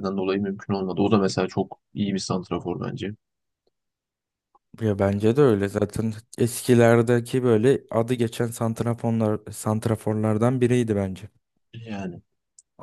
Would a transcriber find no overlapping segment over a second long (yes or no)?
yes